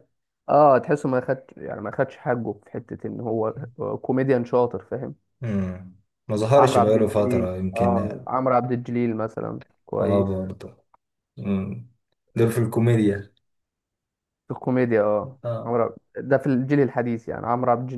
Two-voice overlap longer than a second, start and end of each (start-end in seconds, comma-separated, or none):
6.5-8.2